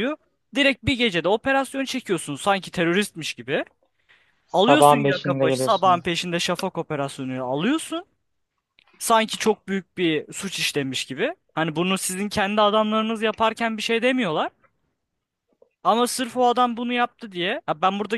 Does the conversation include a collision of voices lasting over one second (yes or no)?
yes